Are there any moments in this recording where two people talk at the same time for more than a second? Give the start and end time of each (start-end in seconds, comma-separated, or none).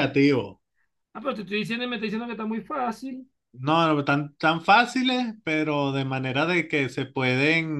none